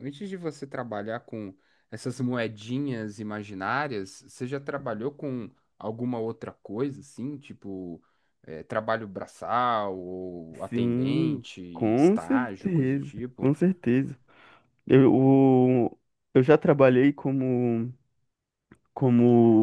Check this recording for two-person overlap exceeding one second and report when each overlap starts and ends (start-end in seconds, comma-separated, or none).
10.7-13.5